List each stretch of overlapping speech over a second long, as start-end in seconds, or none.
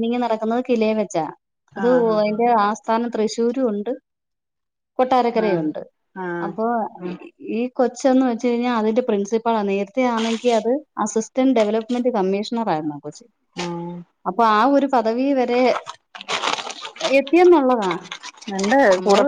none